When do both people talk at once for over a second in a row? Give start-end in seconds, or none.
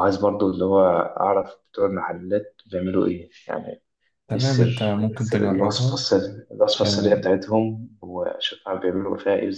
4.3-5.9